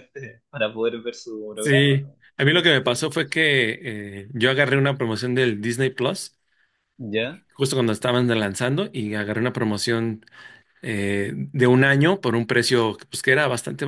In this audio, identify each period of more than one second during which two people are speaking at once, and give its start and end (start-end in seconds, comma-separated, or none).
1.6-3.0